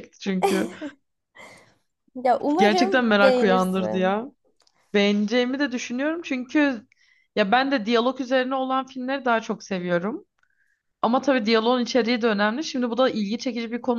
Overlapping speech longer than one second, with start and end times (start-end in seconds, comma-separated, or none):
2.6-4.2